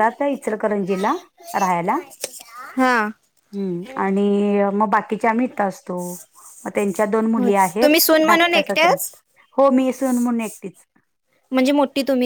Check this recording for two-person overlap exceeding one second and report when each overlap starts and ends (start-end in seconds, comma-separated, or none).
7.3-9.1